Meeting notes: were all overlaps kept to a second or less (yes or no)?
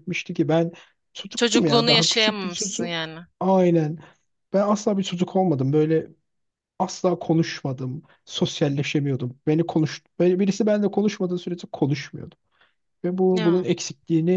no